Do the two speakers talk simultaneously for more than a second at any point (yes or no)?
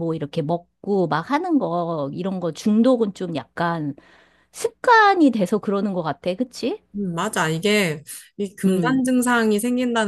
no